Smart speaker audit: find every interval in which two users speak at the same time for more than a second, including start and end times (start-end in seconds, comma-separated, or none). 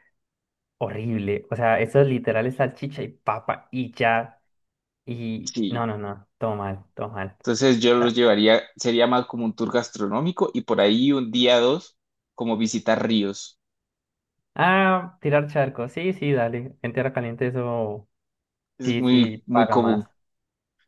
18.8-20.0